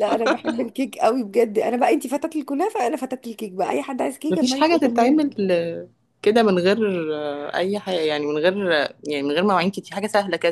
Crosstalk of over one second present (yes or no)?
yes